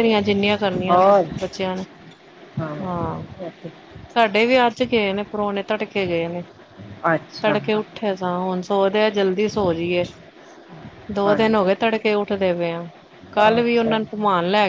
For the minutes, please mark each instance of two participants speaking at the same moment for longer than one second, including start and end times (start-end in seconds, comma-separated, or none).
none